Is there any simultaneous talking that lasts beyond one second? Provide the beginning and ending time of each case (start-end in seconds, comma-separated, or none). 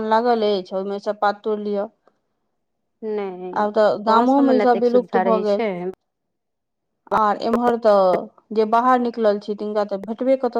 4.1-5.6